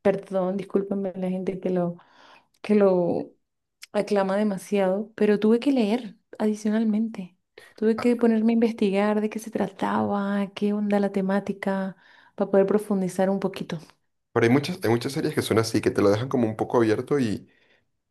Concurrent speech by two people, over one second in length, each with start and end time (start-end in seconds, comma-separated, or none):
none